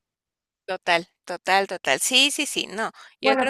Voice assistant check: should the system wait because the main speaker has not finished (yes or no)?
yes